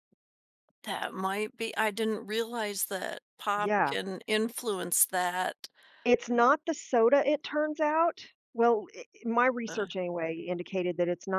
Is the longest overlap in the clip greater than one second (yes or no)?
no